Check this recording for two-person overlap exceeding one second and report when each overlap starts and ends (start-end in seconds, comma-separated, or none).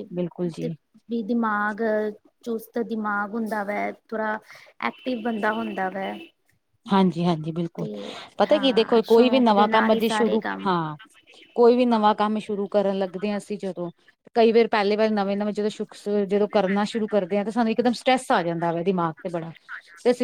8.5-10.7